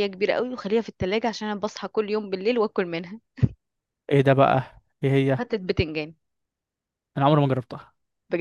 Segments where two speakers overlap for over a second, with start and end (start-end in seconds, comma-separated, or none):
none